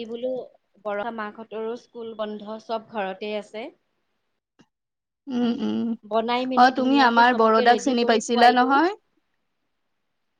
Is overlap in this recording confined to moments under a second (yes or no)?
no